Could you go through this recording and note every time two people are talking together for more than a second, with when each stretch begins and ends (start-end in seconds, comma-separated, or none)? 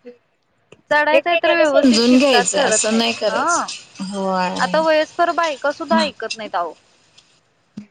1.2-3.7